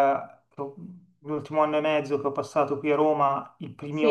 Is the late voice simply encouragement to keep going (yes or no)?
yes